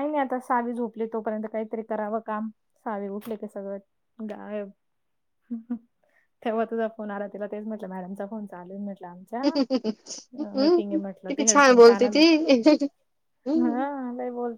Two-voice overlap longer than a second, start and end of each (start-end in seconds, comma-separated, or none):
10.4-12.2